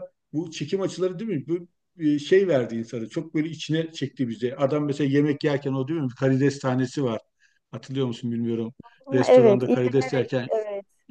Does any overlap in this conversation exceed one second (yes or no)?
yes